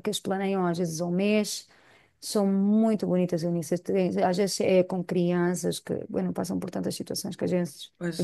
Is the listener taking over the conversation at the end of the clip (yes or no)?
yes